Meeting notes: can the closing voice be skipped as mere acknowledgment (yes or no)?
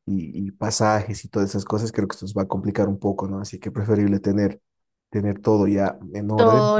no